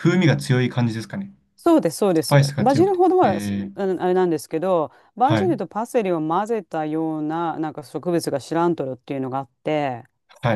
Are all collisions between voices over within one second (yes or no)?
no